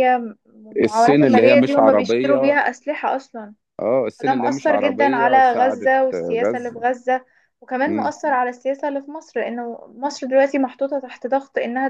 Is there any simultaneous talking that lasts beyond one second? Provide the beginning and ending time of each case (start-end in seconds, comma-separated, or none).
0.8-2.6, 4.2-6.8